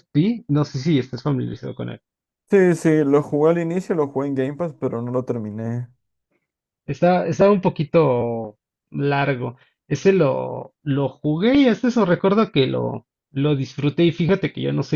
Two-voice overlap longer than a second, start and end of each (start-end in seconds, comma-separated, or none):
none